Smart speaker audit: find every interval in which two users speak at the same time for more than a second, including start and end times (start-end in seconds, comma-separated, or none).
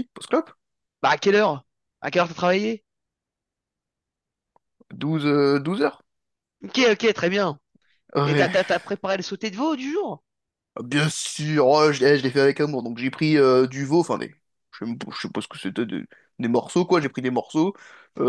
none